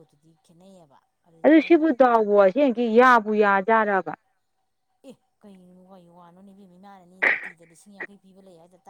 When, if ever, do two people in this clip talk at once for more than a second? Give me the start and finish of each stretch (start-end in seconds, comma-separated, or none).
none